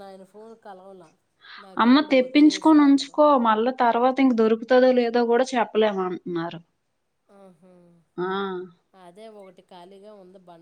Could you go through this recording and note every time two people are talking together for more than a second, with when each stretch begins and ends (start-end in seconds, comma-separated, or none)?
1.8-3.2